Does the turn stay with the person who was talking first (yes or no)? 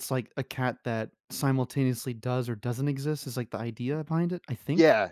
no